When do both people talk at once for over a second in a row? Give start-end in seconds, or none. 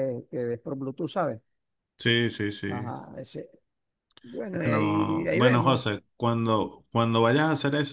4.5-5.8